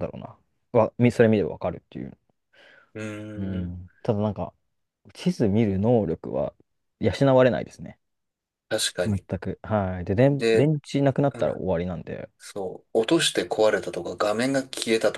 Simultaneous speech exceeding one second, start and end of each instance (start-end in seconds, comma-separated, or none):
none